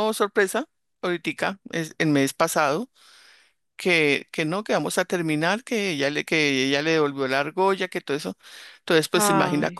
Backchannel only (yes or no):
yes